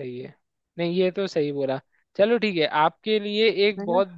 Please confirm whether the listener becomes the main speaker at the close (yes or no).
no